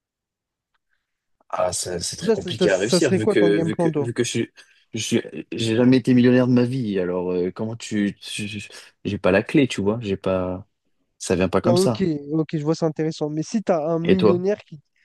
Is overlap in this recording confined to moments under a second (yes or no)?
no